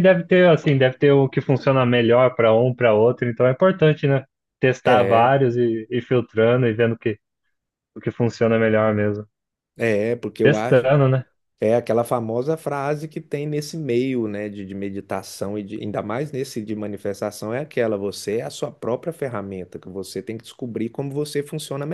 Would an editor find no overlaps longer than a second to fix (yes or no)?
yes